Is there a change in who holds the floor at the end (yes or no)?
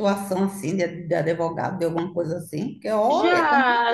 yes